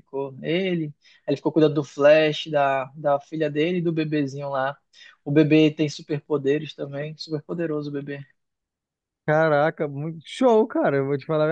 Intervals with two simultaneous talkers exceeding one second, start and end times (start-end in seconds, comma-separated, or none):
none